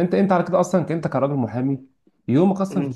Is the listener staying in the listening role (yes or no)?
yes